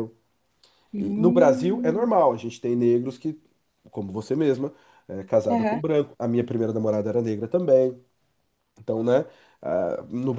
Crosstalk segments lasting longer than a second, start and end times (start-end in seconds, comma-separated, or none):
1.0-2.2